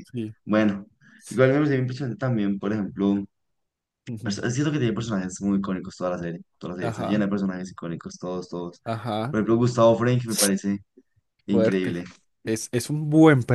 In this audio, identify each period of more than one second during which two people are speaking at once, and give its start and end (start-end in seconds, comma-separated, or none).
none